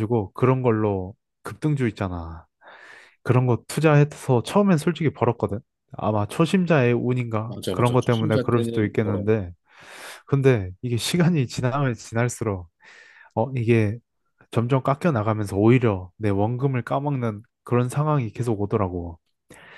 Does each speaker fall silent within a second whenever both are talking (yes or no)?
no